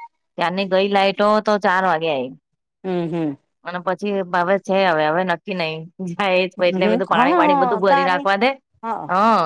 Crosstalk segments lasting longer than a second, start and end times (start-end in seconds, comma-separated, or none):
6.5-8.2